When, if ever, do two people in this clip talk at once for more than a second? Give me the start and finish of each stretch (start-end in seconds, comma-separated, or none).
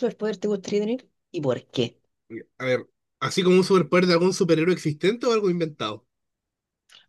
none